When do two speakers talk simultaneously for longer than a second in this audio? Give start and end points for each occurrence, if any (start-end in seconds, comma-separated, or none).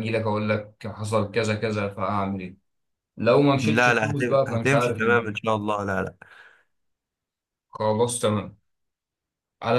3.6-5.4